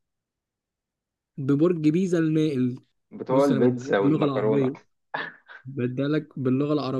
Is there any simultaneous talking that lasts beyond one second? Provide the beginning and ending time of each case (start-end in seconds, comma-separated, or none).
3.3-4.7